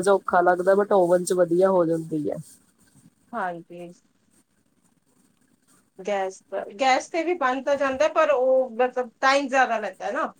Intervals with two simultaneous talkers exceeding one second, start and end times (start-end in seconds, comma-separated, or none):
none